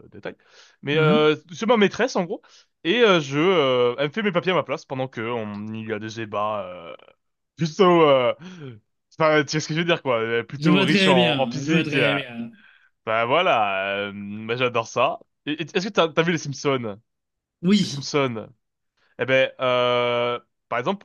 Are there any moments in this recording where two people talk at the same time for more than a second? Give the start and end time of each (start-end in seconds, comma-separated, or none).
10.6-12.2